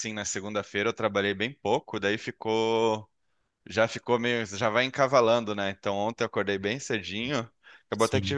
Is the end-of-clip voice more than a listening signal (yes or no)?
no